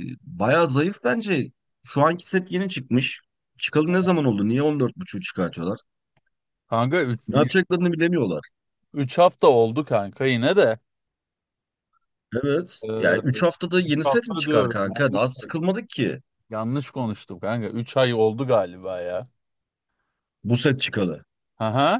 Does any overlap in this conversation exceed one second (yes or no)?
yes